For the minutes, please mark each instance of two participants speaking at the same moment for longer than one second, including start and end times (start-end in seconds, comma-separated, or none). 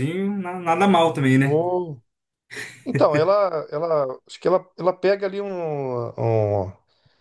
none